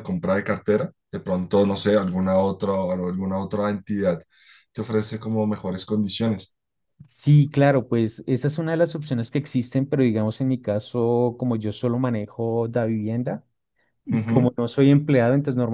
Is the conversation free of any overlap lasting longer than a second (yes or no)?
yes